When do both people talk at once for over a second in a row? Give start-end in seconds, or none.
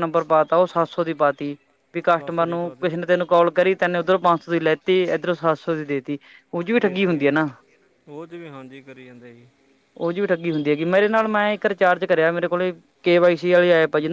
none